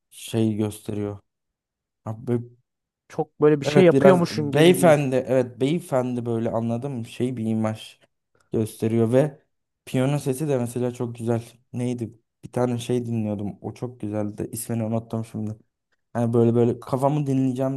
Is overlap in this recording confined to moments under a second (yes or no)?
no